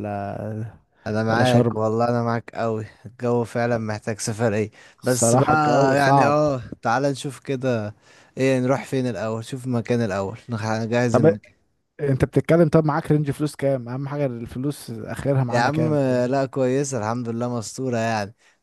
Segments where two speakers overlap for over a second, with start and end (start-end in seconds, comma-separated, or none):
5.0-6.3